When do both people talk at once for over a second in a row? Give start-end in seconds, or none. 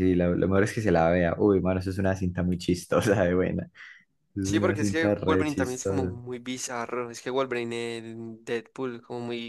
4.4-6.1